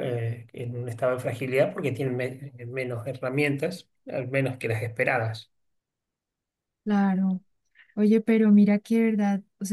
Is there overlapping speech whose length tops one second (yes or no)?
no